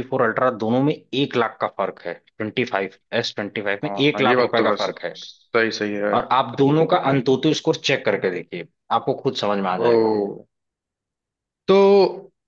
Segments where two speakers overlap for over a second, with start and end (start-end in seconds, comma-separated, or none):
3.8-5.2